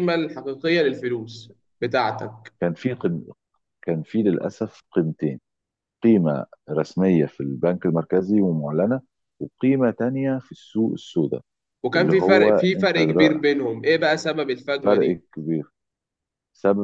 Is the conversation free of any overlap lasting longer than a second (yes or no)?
no